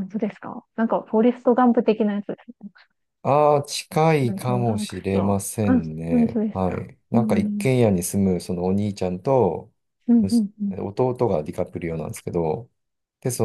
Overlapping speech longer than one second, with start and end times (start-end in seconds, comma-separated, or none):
4.2-7.7